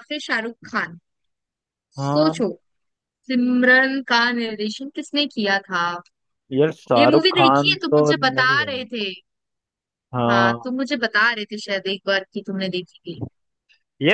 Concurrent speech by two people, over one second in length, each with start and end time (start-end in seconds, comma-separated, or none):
7.0-8.7